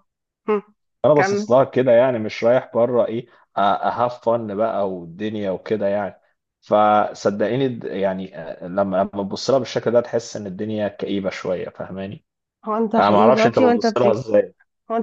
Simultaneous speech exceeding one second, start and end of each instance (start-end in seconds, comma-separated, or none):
13.0-14.2